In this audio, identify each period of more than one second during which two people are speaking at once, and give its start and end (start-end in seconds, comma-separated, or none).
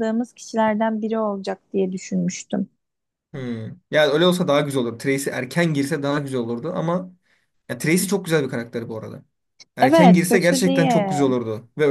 9.8-11.2